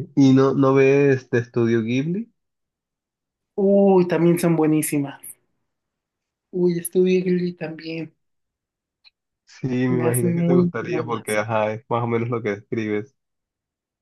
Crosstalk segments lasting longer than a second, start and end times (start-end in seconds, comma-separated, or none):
9.9-11.2